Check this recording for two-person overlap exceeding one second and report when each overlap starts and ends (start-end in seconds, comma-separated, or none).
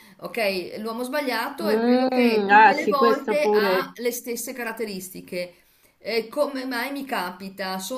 1.6-3.9